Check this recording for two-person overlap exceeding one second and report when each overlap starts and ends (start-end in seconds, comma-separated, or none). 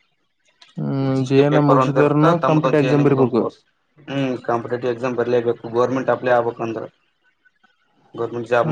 1.2-3.4